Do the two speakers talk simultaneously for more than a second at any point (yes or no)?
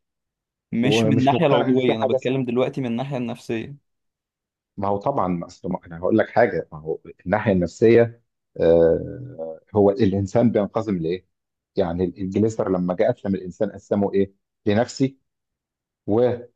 yes